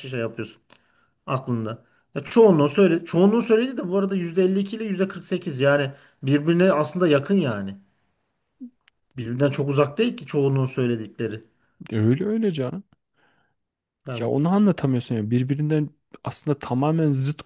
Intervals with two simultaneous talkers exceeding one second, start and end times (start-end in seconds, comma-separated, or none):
none